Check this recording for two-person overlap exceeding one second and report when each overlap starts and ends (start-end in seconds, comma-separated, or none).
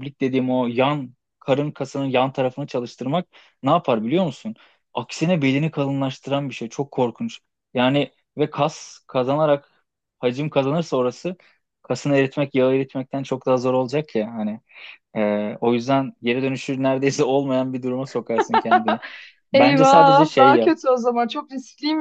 19.5-20.8